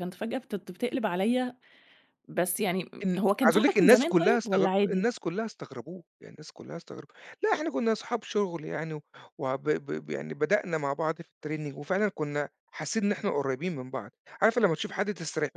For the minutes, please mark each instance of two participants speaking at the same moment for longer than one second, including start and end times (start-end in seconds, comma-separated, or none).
3.0-5.0